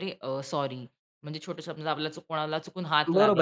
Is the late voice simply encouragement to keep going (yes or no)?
no